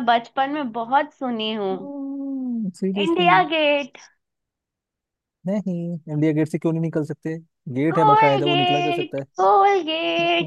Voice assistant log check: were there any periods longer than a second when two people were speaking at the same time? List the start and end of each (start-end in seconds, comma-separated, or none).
7.9-9.2